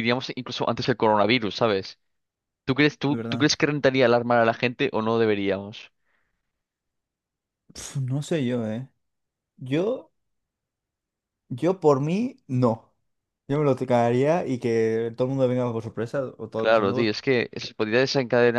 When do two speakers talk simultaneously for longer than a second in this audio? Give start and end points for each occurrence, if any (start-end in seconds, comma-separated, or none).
none